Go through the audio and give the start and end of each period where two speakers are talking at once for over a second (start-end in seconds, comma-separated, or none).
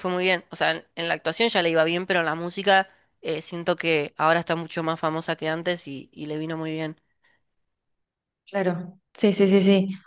none